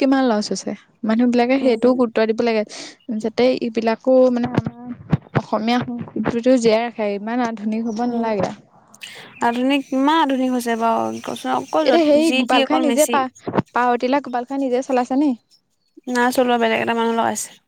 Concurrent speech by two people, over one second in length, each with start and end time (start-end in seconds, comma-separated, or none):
none